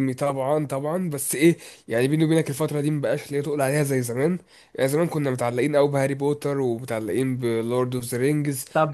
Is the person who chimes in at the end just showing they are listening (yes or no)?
no